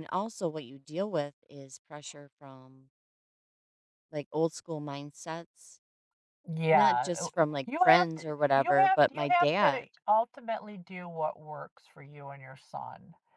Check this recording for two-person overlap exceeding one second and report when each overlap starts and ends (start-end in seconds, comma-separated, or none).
6.7-9.9